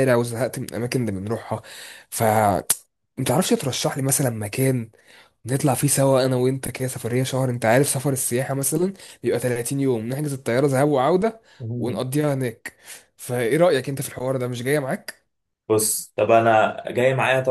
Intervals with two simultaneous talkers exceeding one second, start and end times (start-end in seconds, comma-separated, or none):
none